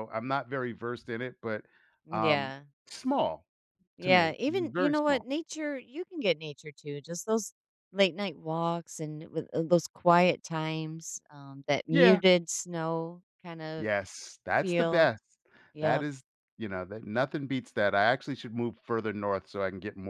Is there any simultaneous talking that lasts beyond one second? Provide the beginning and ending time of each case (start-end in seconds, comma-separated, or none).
4.0-5.2